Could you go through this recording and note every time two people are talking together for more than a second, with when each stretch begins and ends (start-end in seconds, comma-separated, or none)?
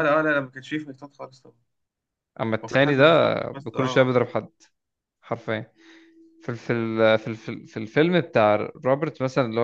2.6-4.1